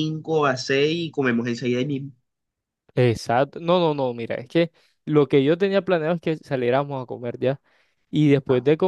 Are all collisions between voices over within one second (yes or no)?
yes